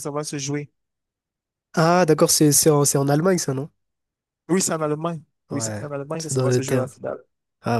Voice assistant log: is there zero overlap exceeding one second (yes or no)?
no